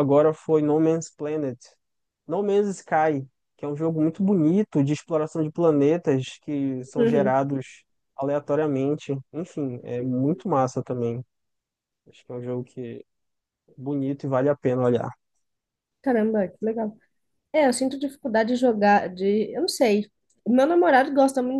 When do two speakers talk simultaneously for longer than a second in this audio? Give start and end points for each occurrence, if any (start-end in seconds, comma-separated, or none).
none